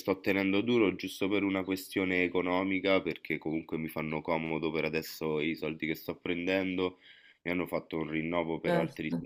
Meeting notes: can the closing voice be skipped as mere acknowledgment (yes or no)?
yes